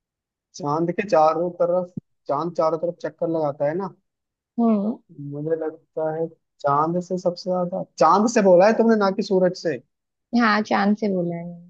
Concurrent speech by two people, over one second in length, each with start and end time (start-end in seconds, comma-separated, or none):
none